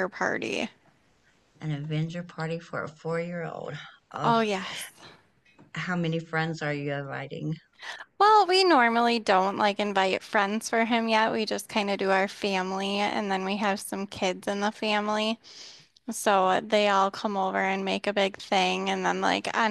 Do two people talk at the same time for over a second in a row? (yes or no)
no